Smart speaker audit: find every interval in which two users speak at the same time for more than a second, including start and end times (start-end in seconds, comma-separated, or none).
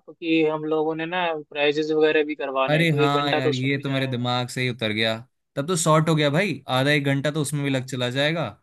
2.7-4.3